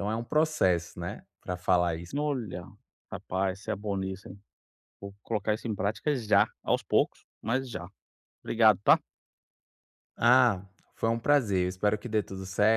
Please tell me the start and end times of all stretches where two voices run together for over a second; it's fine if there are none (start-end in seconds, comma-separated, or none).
none